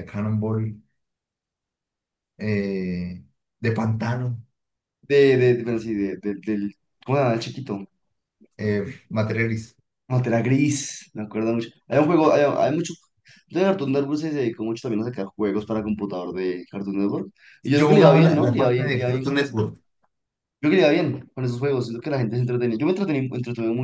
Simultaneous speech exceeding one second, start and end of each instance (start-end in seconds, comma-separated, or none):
17.7-19.6